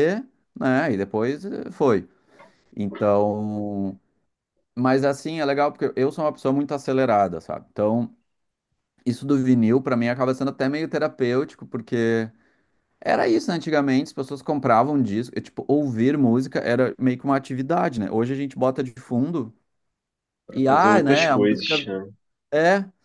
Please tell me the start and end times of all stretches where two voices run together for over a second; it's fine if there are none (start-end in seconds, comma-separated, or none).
20.5-21.8